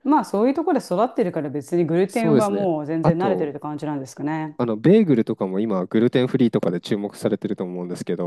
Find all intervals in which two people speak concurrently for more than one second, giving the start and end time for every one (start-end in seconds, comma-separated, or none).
2.1-3.6